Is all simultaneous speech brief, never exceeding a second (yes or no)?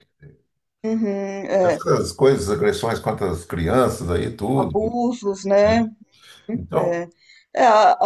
yes